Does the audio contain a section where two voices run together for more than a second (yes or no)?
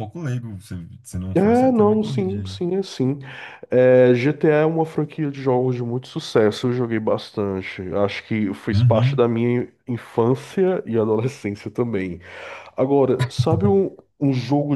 yes